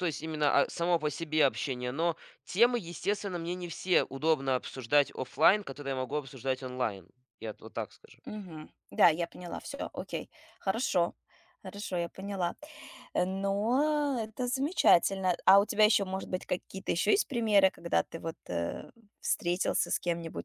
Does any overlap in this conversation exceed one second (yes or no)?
no